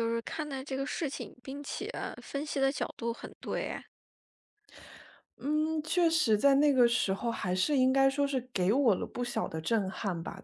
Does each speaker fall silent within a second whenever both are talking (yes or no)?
yes